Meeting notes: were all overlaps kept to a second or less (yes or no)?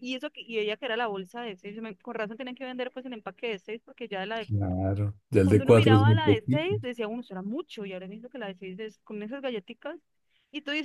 no